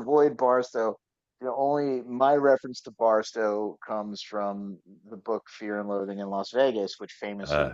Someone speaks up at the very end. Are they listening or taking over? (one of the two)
listening